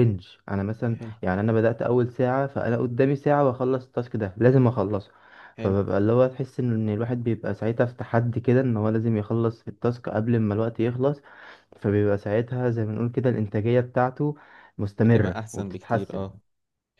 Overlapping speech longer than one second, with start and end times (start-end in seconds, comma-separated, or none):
15.0-16.3